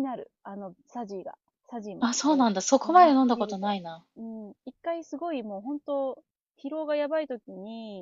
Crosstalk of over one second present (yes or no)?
yes